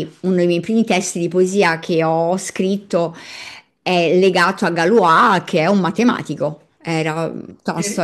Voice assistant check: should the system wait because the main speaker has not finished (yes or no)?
no